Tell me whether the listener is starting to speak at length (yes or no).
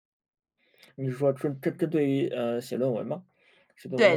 yes